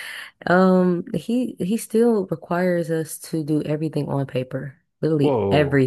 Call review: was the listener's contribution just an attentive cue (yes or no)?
no